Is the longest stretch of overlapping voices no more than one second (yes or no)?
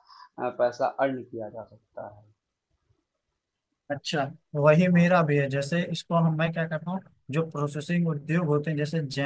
yes